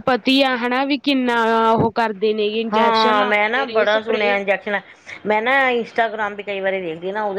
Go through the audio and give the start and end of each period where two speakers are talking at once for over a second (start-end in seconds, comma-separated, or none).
2.7-4.3